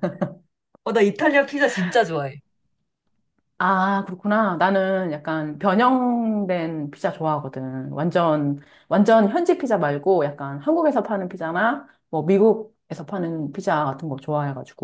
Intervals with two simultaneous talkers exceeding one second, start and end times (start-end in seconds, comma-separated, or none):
none